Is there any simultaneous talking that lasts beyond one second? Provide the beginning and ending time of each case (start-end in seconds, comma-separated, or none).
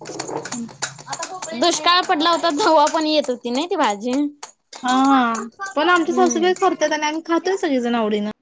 none